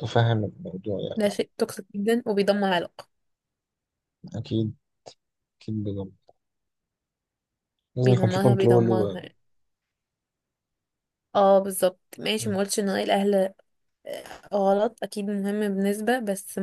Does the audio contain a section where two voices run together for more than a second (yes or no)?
yes